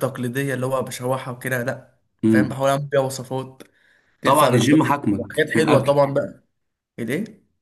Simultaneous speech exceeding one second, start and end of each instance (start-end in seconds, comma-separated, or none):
4.2-6.0